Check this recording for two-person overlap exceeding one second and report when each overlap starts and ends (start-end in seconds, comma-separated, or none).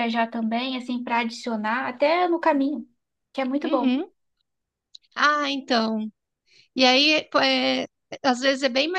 none